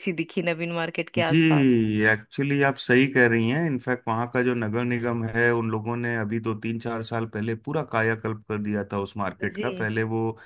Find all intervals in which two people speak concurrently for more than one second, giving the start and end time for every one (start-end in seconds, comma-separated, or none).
none